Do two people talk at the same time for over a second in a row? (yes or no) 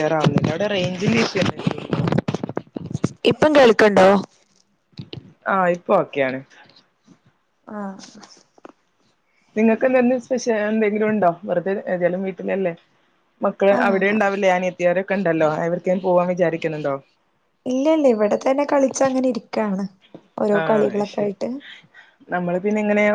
no